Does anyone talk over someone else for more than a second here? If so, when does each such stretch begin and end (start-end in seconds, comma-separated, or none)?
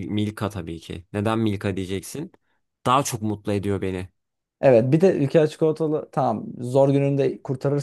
none